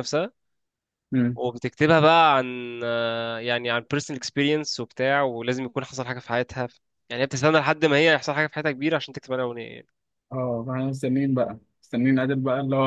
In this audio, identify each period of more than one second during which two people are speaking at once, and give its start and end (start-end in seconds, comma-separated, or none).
none